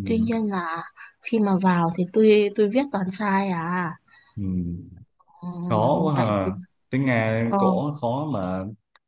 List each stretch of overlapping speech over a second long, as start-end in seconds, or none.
none